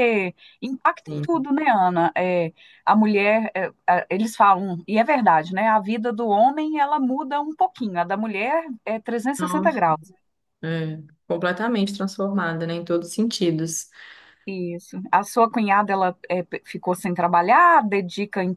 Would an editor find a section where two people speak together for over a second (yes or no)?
no